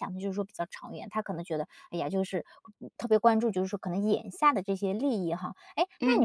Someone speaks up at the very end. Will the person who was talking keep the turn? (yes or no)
yes